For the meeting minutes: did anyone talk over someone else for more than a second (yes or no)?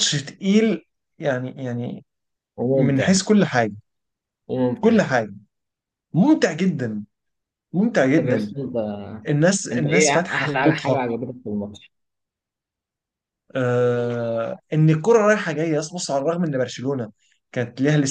yes